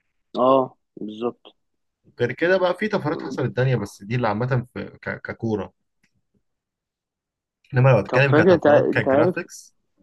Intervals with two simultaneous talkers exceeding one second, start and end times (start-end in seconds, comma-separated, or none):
8.1-9.4